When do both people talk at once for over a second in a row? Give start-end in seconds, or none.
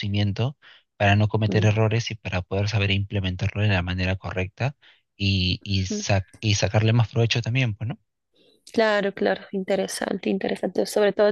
none